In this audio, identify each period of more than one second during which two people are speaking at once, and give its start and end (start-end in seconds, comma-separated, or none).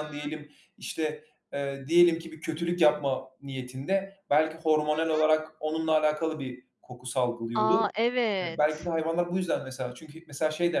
none